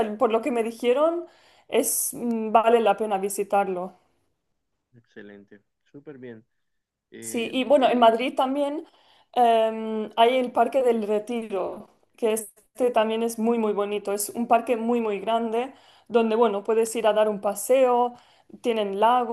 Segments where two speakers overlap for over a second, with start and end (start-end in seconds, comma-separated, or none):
none